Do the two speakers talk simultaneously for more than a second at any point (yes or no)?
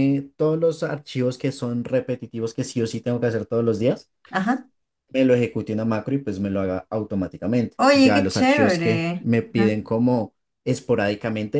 yes